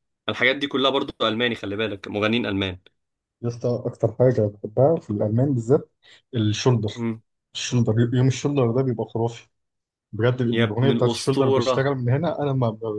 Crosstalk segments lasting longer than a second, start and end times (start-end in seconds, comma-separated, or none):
10.5-11.9